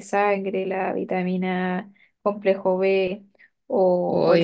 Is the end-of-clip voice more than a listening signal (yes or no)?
yes